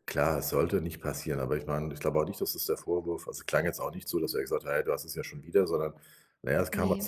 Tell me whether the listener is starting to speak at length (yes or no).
no